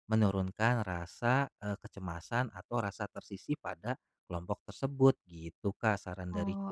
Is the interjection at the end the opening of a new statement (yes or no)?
yes